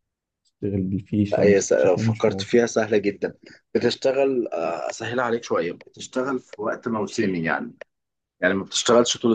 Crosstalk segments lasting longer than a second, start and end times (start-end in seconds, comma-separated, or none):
1.3-2.6